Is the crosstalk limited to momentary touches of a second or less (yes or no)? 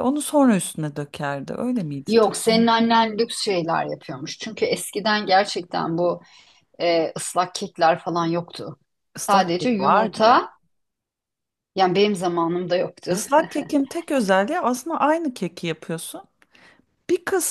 no